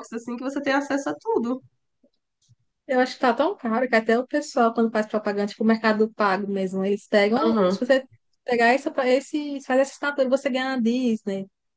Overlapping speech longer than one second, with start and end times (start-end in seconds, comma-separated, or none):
none